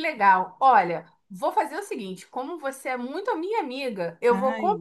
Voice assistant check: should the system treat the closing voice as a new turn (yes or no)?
no